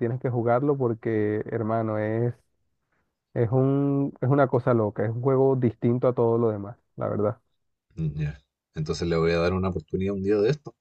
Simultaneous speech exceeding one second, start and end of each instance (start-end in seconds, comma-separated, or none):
none